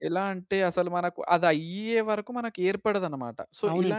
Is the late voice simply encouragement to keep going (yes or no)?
yes